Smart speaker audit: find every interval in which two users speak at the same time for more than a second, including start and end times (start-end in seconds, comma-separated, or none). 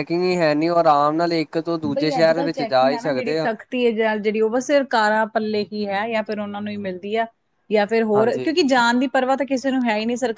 none